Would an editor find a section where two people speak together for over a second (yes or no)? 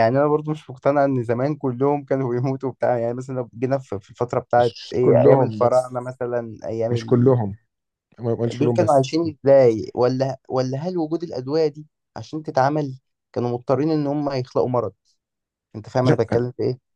yes